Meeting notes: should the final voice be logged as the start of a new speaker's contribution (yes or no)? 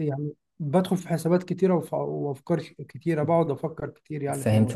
yes